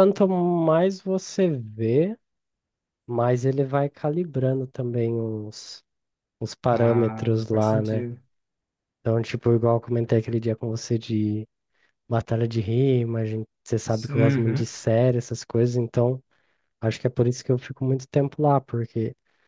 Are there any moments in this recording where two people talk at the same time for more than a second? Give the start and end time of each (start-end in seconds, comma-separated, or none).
6.7-8.1